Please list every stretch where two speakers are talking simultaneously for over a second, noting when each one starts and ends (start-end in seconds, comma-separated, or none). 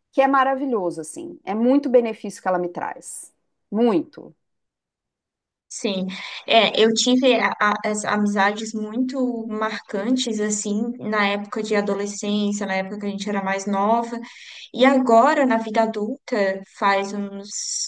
none